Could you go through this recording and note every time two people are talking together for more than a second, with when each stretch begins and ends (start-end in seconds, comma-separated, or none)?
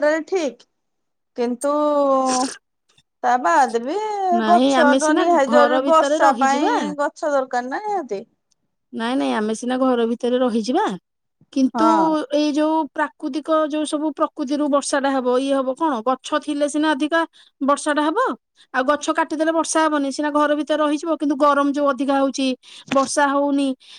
4.5-6.7